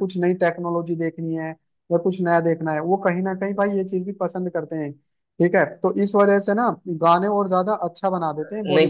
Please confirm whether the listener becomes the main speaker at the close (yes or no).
yes